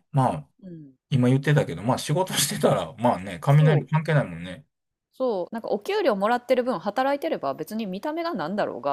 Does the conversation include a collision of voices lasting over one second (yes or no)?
no